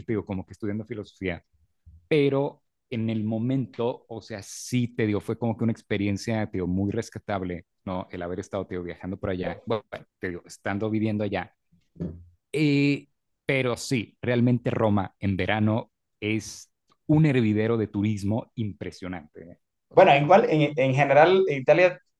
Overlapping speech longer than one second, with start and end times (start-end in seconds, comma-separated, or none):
none